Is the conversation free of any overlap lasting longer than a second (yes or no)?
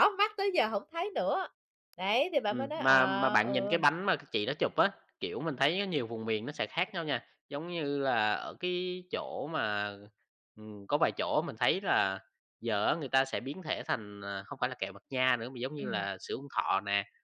no